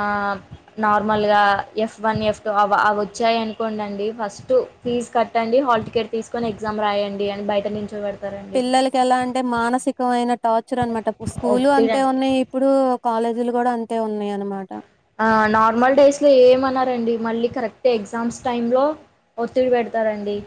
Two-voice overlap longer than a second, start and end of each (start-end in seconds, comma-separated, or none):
none